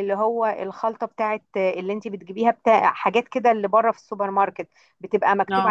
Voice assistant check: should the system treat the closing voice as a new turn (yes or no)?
no